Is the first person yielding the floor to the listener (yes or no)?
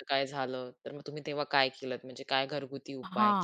yes